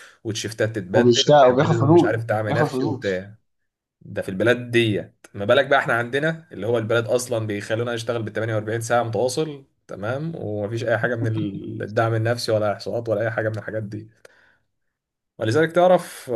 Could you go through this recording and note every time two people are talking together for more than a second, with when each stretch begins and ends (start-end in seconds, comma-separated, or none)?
0.9-3.2